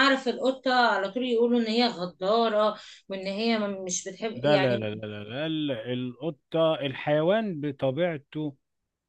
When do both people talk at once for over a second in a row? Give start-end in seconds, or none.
none